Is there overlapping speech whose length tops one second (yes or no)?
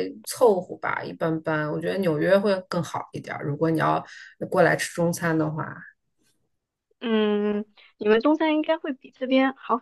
no